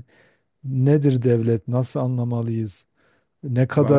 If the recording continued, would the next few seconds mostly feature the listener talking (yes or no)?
no